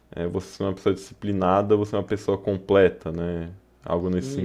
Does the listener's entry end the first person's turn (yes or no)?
yes